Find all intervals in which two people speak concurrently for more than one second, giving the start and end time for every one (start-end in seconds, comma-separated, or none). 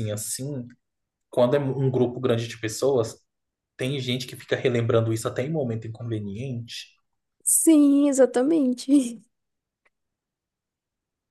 none